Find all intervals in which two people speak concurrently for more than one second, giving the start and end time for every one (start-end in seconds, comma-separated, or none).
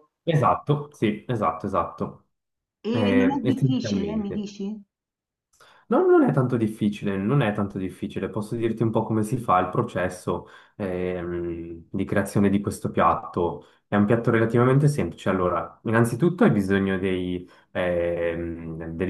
2.9-4.5